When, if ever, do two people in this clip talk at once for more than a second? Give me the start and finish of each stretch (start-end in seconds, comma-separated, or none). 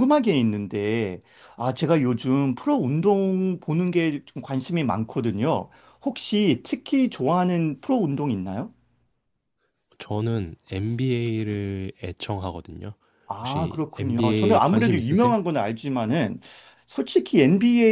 13.4-15.3